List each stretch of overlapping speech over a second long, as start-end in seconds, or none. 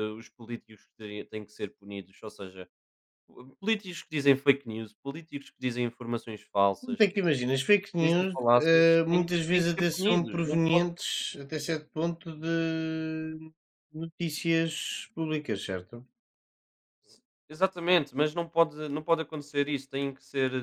8.0-10.8